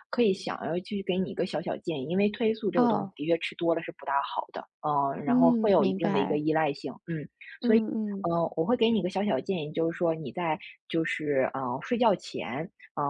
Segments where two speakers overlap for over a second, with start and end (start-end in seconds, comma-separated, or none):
5.2-6.4